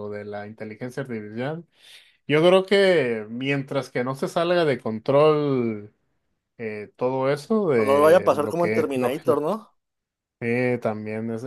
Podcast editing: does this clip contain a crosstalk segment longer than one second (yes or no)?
yes